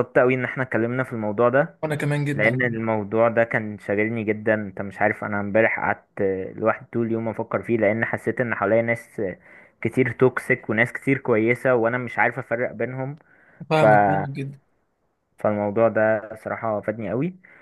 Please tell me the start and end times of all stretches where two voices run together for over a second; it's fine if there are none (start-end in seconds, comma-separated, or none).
none